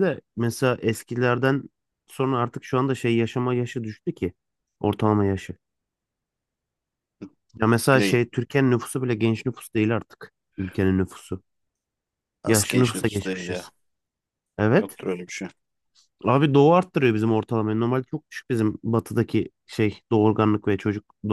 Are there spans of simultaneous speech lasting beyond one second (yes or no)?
yes